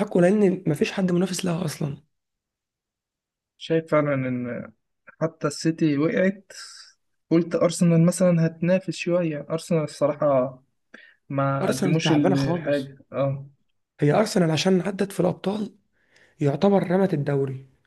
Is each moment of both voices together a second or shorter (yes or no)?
no